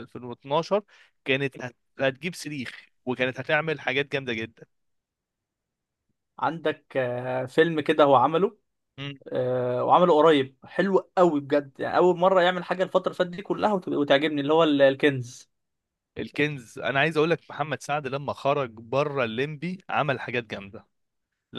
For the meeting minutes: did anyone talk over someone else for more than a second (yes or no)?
no